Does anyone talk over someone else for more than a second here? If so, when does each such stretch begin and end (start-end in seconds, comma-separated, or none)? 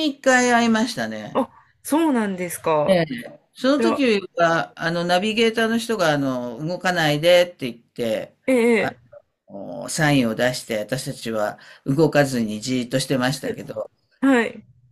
none